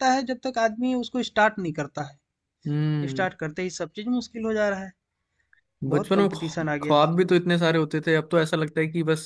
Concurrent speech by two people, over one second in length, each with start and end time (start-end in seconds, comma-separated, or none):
5.9-7.4